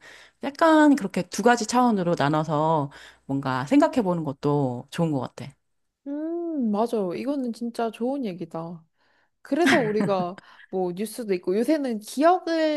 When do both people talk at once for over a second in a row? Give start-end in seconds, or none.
none